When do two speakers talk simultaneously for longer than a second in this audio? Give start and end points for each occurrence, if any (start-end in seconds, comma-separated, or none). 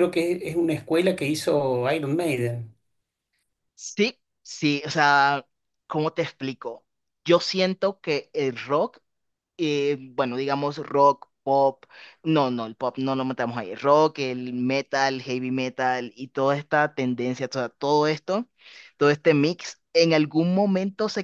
none